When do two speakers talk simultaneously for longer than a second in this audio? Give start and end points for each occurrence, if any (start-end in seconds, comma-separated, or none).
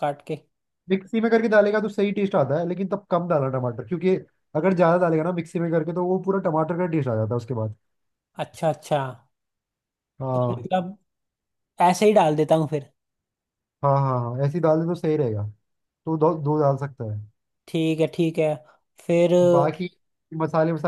none